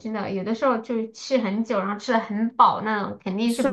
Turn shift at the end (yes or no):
yes